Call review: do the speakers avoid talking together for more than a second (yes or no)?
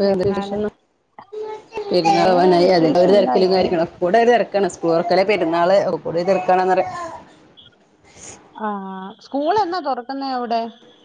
no